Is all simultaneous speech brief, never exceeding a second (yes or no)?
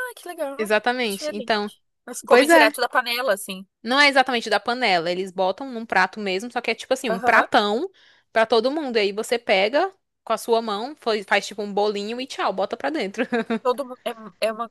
yes